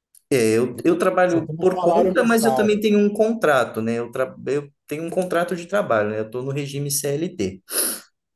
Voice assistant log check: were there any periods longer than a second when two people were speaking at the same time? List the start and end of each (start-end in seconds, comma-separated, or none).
1.2-2.8